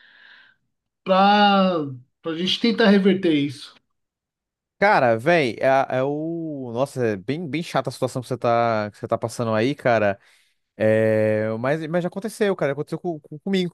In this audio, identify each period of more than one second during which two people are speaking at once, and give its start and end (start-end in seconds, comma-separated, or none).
none